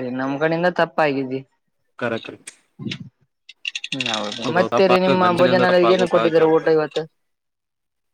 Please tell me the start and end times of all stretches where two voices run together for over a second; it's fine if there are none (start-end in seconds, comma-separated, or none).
4.5-6.8